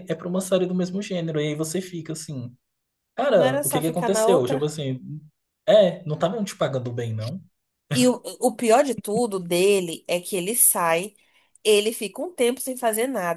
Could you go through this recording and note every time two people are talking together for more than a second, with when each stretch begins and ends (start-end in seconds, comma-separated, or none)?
3.3-4.7